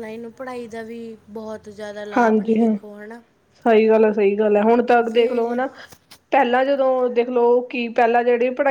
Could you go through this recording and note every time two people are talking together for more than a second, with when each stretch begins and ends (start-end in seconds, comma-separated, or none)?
none